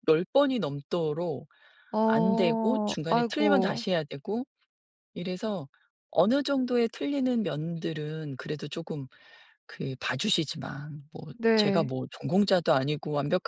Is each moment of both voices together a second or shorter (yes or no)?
no